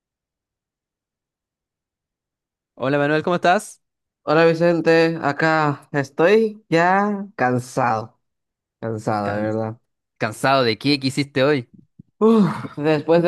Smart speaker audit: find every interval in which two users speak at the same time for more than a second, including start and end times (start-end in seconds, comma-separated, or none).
none